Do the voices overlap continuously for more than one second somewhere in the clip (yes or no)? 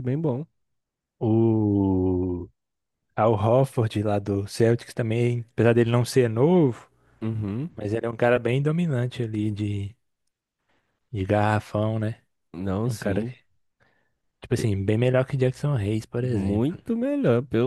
no